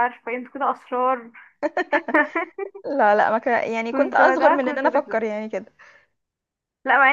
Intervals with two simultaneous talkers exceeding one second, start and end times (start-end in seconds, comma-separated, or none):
3.9-5.2